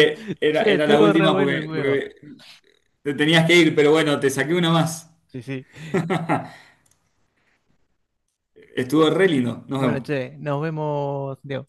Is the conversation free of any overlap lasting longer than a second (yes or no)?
no